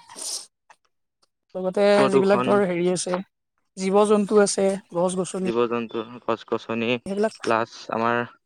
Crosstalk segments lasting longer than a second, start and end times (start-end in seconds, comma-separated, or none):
none